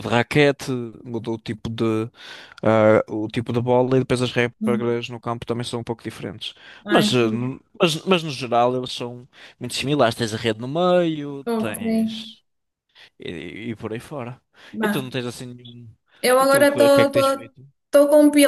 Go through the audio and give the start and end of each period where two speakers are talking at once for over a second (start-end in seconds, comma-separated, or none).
16.4-17.6